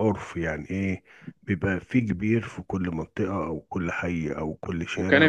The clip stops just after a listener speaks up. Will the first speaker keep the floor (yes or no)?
no